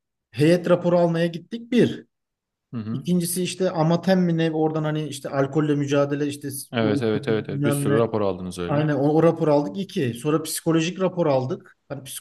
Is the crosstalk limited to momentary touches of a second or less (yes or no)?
no